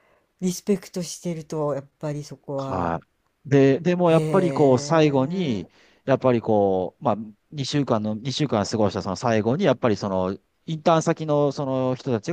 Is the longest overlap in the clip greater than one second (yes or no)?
yes